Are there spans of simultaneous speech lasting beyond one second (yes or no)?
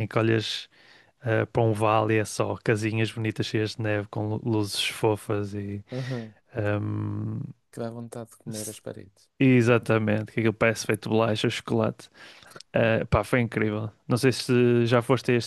no